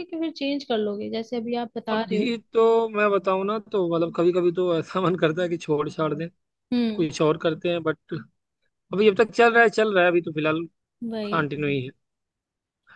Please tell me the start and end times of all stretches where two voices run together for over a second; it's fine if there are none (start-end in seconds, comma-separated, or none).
none